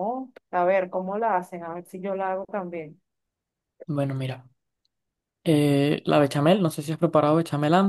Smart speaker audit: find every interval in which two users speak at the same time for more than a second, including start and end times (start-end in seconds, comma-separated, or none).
none